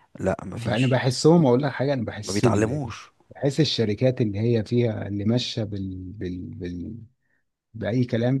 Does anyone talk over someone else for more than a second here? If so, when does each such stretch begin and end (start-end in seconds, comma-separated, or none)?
none